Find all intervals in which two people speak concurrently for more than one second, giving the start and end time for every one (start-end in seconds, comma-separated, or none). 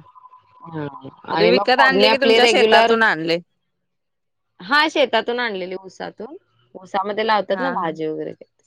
1.4-2.9